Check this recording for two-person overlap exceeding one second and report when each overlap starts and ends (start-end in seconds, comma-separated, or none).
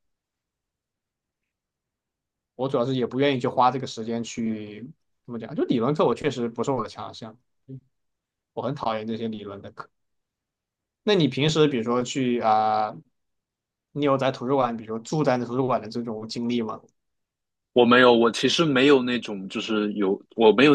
none